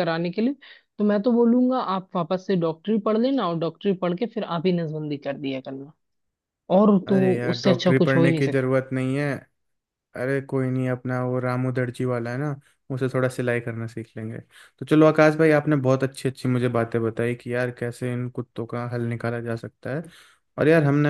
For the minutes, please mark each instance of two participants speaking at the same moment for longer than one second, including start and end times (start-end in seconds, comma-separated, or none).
7.1-8.7